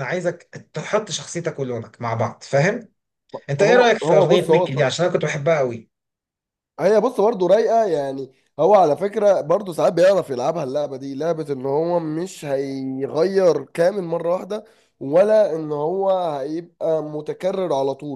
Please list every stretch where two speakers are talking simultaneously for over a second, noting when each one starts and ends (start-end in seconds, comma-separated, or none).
3.6-4.9